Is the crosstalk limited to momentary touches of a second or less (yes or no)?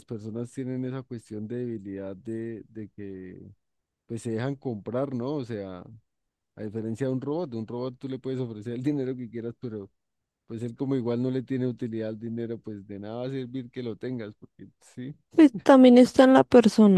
yes